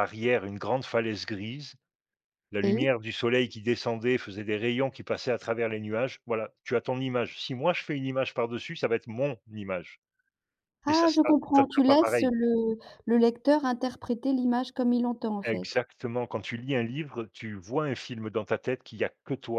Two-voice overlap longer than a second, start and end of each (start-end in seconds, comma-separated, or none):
10.9-12.3